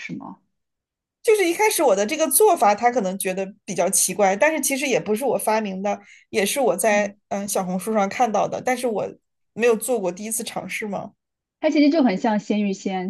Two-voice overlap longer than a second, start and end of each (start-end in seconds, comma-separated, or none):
none